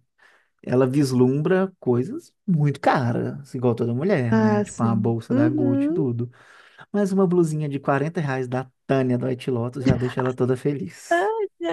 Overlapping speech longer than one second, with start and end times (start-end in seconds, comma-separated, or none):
4.3-6.1